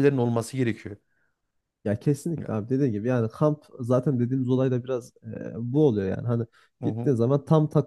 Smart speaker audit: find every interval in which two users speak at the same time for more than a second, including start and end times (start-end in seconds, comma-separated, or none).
none